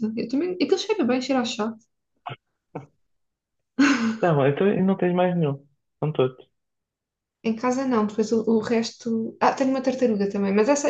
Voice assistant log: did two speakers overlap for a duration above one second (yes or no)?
no